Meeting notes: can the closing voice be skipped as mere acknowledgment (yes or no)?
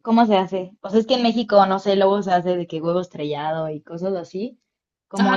no